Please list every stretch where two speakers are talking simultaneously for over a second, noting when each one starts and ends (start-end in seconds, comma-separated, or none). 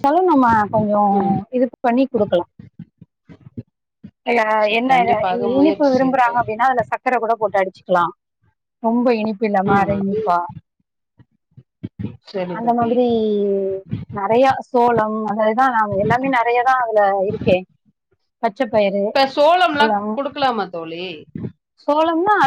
4.7-6.5